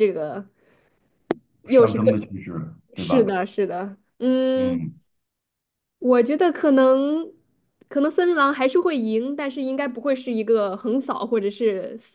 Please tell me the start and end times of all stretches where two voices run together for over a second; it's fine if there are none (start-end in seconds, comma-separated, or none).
none